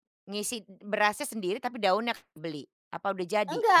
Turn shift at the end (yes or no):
yes